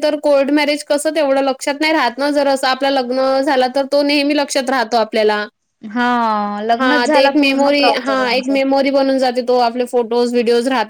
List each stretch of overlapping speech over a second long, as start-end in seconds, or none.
6.8-8.6